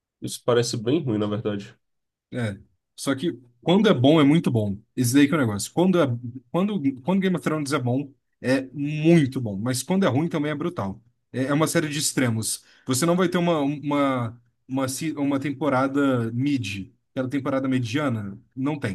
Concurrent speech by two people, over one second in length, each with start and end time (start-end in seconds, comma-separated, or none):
none